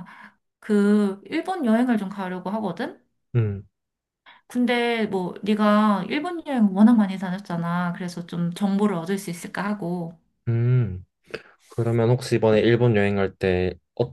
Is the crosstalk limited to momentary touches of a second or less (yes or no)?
yes